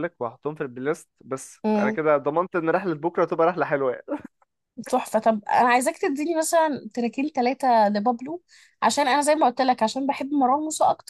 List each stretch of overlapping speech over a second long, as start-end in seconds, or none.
none